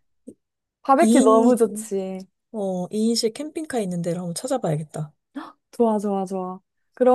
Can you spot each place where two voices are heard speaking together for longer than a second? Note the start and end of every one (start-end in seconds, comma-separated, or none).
none